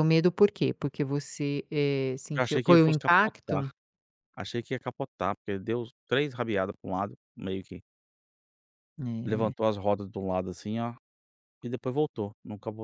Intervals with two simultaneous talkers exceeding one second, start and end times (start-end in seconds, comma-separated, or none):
2.3-3.6